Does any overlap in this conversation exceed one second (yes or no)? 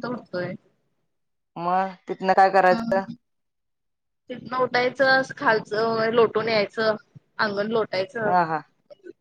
no